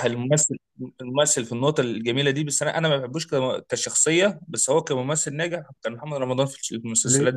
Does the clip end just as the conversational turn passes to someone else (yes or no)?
yes